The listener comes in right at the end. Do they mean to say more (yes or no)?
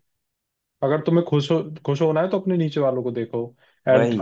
no